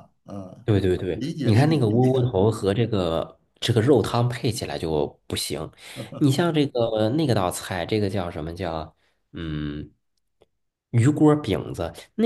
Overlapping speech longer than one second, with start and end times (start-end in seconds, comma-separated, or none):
1.1-2.3